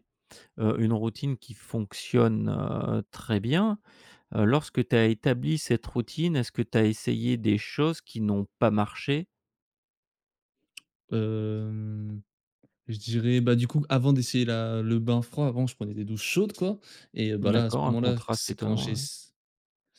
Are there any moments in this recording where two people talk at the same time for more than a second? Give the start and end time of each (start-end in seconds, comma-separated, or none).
17.4-19.1